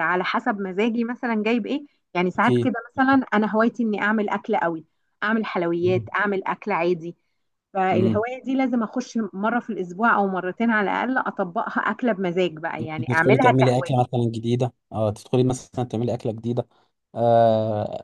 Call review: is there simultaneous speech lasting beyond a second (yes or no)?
yes